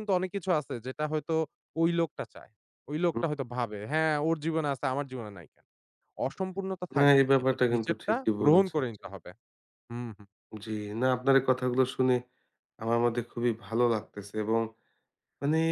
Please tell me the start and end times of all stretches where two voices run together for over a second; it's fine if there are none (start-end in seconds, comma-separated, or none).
7.0-9.0